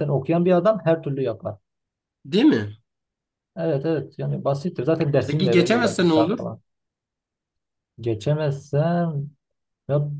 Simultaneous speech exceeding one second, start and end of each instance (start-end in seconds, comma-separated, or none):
5.3-6.5